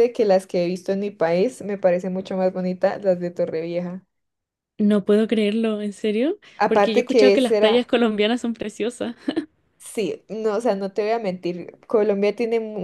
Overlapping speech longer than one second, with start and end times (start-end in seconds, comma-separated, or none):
6.6-7.8